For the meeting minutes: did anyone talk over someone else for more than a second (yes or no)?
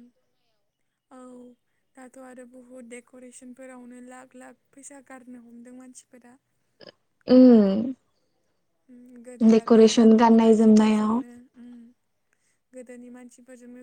yes